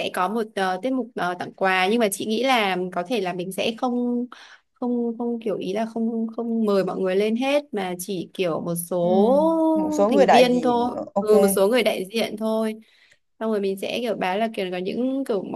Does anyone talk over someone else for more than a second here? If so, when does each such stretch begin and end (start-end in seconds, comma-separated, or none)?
9.7-11.3